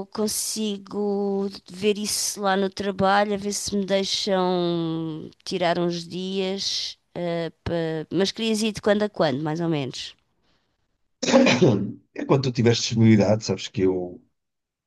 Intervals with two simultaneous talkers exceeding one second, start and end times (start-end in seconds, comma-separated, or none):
none